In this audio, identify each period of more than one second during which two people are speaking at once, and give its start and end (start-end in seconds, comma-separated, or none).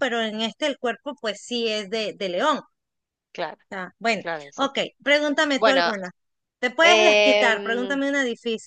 6.8-8.0